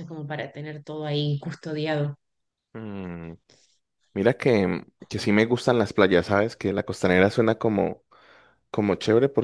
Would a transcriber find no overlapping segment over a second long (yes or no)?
yes